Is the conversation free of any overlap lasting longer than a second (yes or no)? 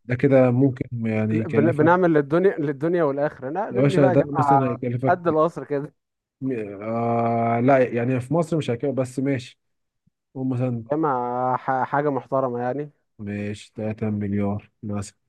no